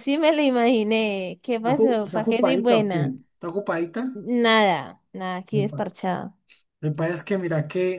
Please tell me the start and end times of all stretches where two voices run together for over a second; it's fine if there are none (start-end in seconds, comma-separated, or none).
1.7-3.2